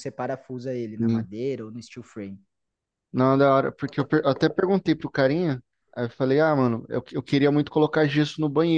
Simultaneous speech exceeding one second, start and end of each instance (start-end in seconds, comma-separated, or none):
none